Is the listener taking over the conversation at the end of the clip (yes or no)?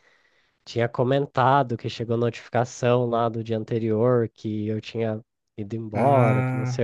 no